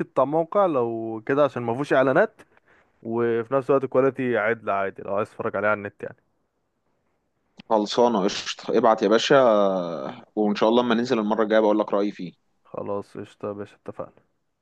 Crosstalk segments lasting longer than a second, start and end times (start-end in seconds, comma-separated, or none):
none